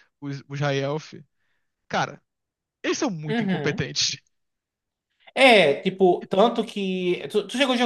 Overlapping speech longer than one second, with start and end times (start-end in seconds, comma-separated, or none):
none